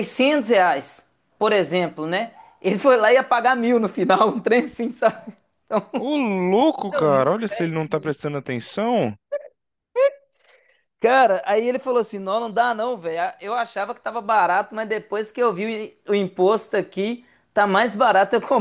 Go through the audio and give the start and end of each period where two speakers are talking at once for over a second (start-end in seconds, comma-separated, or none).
6.9-8.2